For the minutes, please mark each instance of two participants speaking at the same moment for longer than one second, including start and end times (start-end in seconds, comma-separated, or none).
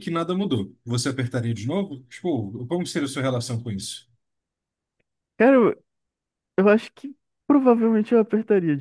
none